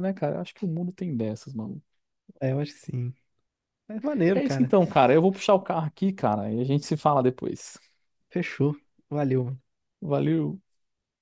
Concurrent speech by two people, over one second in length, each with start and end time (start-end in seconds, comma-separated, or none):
none